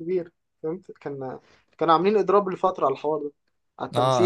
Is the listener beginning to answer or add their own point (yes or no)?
yes